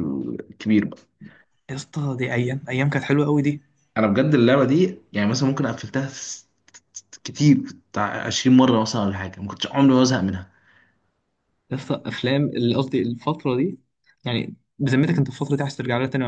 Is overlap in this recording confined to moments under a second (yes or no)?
yes